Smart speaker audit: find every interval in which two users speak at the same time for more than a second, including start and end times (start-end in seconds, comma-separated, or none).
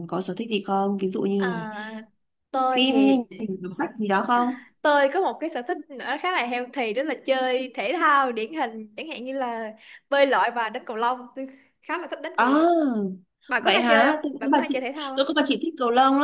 13.6-15.3